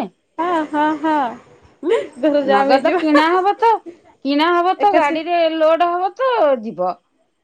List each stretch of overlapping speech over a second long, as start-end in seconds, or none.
none